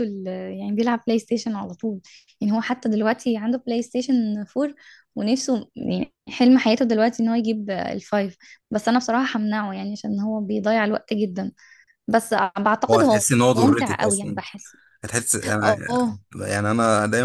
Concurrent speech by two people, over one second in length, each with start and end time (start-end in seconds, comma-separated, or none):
12.9-14.4